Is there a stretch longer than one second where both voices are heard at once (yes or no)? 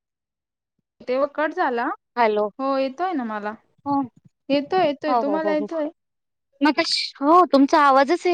no